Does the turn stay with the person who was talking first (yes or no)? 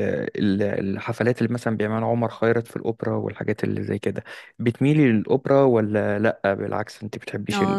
no